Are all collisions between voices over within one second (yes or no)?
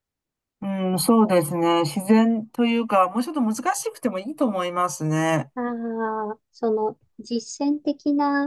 yes